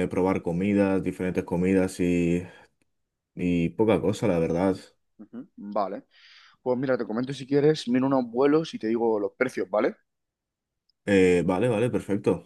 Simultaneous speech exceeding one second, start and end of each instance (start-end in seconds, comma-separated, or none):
none